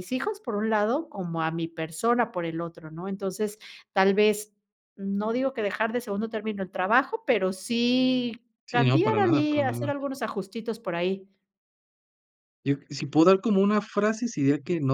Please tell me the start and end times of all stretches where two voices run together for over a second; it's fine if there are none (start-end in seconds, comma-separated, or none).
8.7-10.0